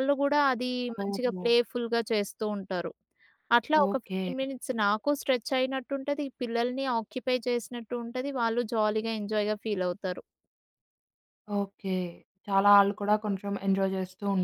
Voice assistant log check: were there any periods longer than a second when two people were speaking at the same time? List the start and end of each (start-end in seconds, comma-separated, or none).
none